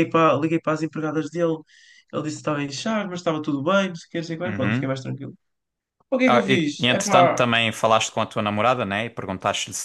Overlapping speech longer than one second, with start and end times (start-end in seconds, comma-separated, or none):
6.2-7.5